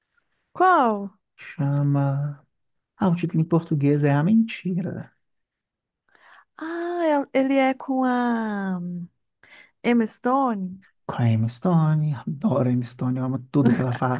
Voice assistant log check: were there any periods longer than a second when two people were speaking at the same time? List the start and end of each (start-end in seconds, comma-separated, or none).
none